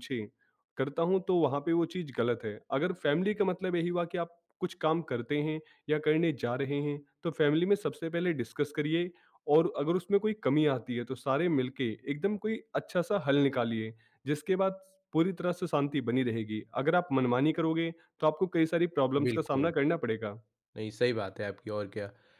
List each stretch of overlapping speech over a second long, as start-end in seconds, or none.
none